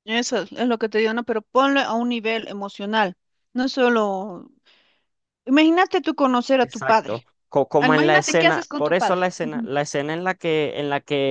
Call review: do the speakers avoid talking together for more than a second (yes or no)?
no